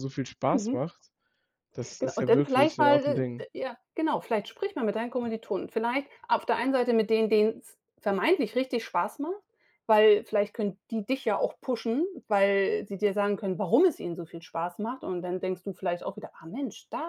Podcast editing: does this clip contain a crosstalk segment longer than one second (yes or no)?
yes